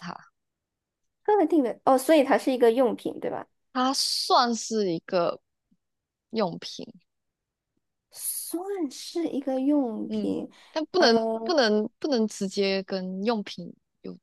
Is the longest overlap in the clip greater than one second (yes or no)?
no